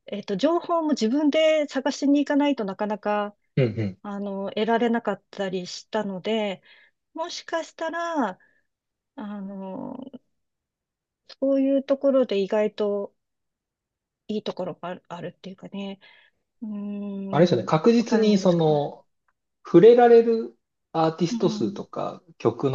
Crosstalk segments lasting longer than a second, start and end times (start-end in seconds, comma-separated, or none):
17.3-18.6